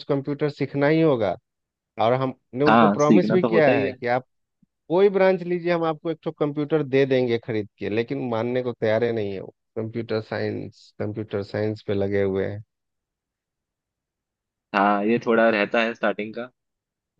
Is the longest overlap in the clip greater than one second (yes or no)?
yes